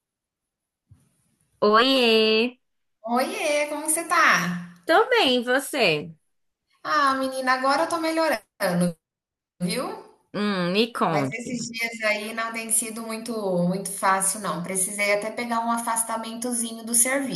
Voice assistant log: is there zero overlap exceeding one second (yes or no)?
yes